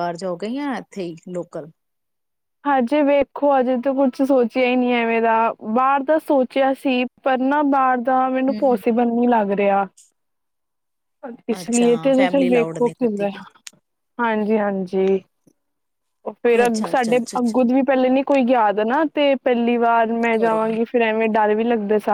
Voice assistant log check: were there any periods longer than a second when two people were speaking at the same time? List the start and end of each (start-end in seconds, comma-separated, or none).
none